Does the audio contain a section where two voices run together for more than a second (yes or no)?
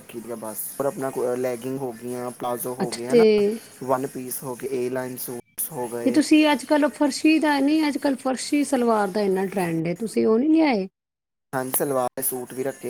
no